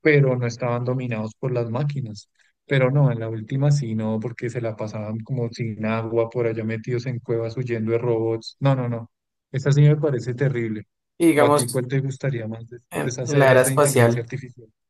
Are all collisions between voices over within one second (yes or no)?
no